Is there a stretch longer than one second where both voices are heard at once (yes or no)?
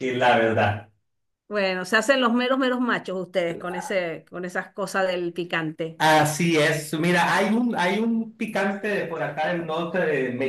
no